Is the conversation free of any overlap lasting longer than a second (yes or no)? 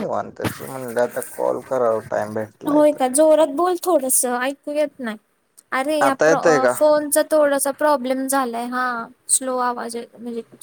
yes